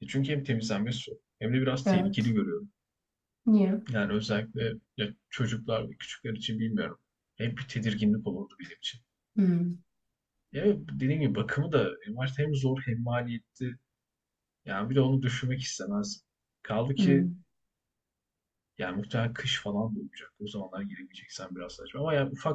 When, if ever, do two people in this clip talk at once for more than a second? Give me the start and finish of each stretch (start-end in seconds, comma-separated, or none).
none